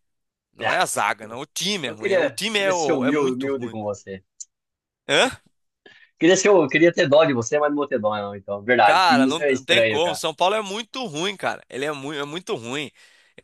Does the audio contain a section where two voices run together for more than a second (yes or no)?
yes